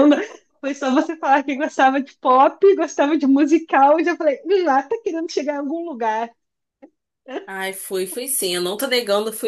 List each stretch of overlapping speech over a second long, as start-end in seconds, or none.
none